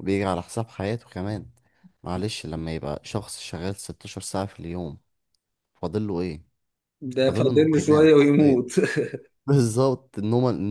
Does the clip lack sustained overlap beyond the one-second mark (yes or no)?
no